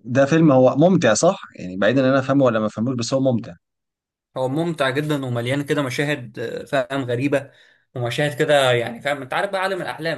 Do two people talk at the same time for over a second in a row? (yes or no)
no